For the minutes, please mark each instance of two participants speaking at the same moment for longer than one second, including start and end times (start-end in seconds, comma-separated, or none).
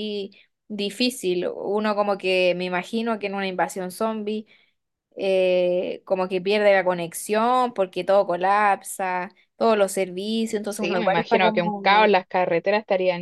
10.7-12.1